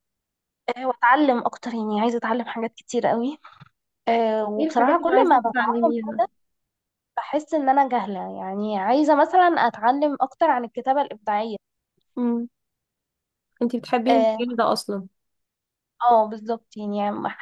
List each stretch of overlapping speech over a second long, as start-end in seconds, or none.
4.6-5.9